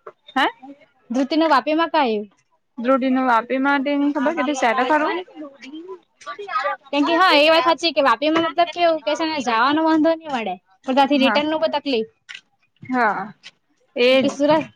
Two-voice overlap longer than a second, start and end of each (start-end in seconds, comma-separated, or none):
none